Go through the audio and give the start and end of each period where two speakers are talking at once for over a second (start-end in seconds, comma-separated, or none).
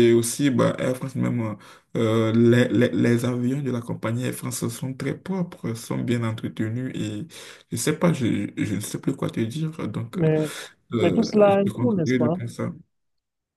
11.0-12.4